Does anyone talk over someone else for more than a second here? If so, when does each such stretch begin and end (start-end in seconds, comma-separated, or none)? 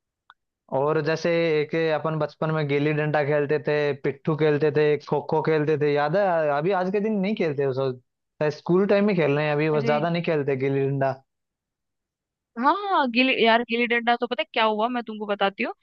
none